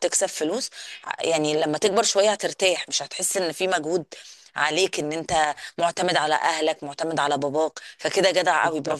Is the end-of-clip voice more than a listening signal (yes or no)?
yes